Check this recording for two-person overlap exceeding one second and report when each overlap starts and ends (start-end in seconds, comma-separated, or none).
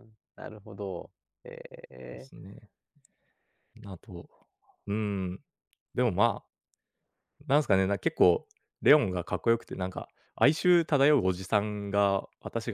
none